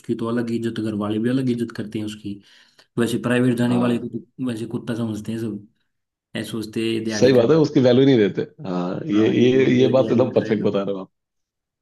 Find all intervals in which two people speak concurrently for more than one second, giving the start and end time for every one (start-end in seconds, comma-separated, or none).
9.1-10.7